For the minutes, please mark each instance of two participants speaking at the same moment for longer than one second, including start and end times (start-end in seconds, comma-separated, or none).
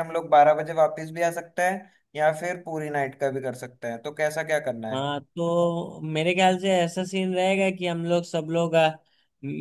none